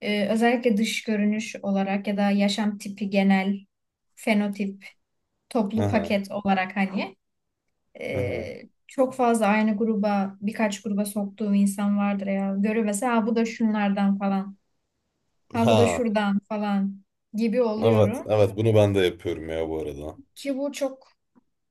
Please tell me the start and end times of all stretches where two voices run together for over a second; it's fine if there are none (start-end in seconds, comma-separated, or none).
none